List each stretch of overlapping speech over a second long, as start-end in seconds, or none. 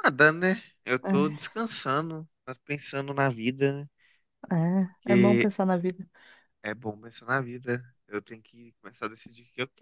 none